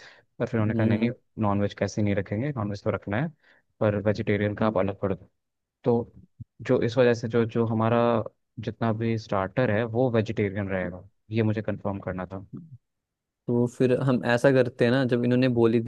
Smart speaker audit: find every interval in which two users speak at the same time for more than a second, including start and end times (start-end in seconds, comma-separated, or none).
none